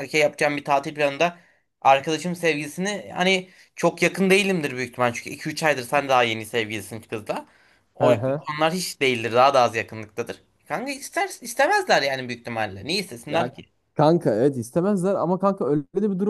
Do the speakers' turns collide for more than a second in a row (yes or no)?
no